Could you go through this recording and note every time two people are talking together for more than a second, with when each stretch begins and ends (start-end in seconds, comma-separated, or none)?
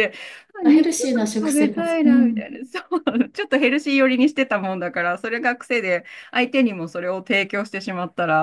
0.6-2.5